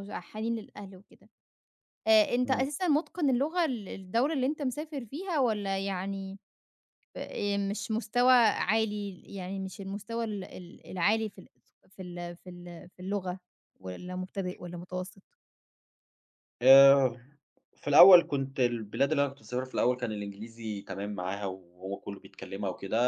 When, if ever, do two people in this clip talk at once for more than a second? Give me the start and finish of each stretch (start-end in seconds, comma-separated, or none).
none